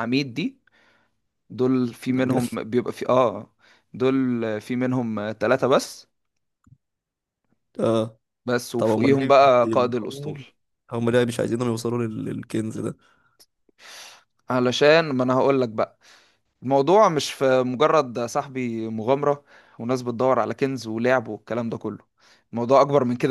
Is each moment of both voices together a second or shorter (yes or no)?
no